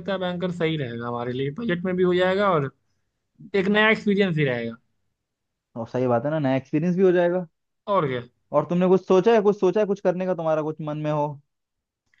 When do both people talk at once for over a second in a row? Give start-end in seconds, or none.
none